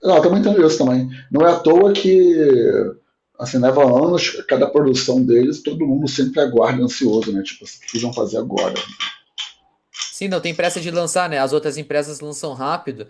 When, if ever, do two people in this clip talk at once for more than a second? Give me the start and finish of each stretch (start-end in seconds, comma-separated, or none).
none